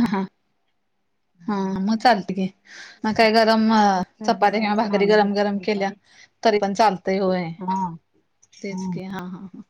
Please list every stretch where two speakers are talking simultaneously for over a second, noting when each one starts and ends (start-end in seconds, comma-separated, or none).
4.3-5.9